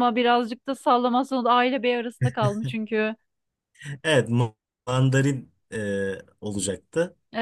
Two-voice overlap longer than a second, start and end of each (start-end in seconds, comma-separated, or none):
none